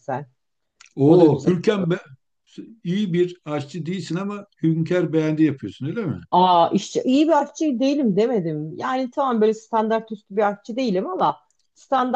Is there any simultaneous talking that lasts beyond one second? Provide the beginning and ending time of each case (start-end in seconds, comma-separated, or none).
none